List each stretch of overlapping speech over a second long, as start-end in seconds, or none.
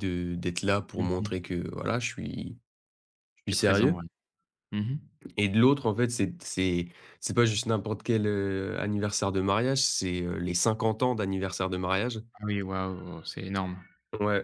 none